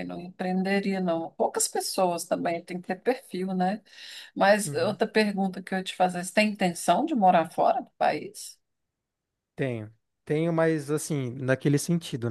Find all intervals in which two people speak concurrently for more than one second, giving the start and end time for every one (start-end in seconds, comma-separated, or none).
none